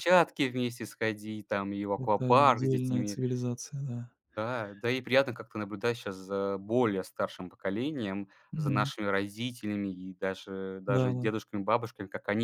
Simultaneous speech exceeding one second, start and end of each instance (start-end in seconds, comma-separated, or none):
2.0-3.2